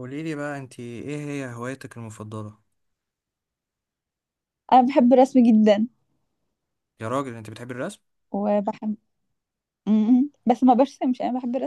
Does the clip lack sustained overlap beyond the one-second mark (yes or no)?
yes